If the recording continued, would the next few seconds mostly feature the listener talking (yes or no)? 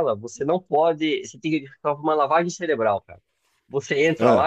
no